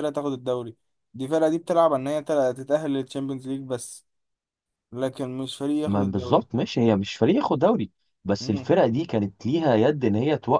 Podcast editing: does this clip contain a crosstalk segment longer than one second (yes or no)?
no